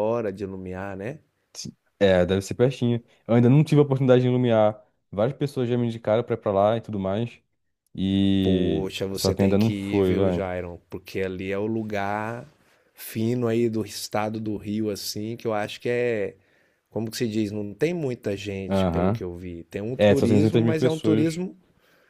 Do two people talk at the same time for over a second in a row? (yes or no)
yes